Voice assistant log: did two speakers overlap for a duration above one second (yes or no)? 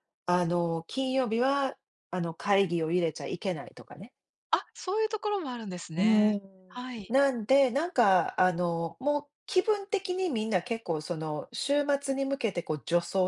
no